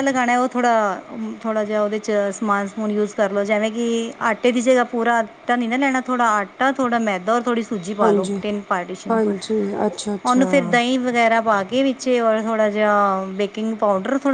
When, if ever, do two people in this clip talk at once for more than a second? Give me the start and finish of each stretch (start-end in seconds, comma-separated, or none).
none